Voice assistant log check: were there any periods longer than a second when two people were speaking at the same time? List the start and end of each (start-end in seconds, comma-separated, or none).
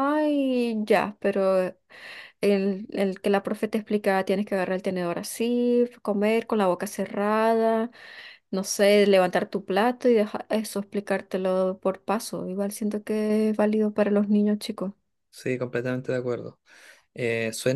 none